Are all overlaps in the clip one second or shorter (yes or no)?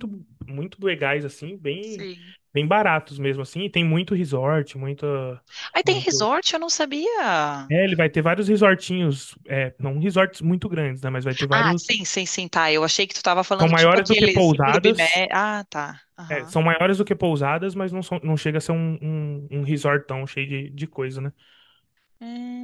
no